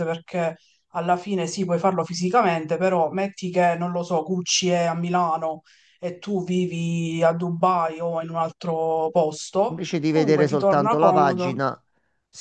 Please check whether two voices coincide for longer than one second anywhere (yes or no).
yes